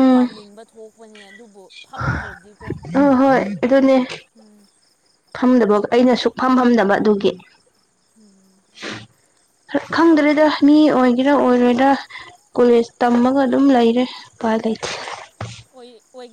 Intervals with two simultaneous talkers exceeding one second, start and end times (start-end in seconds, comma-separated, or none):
none